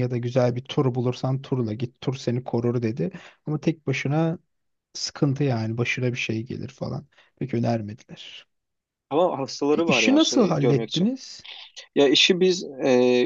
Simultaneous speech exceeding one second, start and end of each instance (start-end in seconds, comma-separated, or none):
9.8-11.1